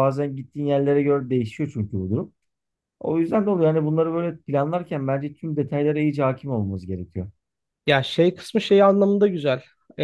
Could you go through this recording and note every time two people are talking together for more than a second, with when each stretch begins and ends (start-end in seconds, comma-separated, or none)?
none